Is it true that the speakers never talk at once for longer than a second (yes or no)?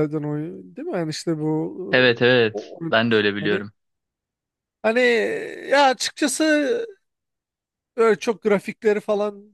no